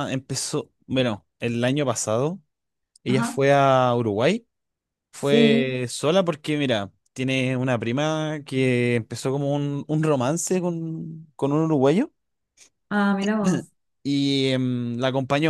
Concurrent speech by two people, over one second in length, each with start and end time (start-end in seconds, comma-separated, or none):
none